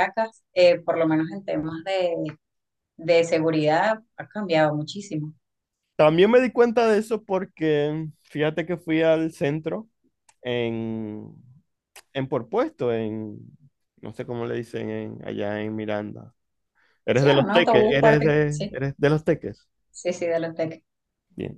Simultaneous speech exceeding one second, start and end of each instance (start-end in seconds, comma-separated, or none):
17.1-18.8